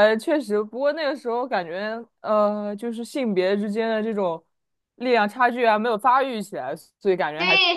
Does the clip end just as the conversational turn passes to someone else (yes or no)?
yes